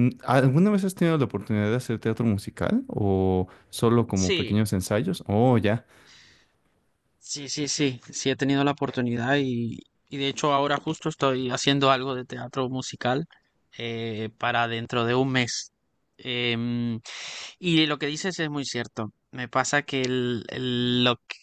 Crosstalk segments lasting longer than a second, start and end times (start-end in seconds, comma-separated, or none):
none